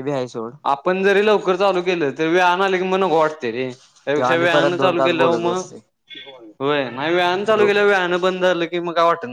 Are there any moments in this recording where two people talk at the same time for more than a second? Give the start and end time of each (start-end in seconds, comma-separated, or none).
4.2-5.7